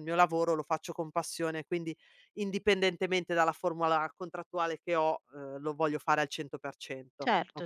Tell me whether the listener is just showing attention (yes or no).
no